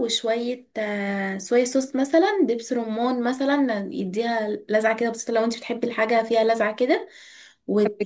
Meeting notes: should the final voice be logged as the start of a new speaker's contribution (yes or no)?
no